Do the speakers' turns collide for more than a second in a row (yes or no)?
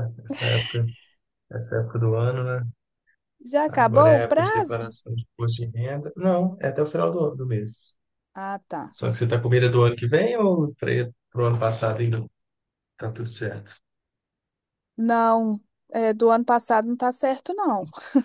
yes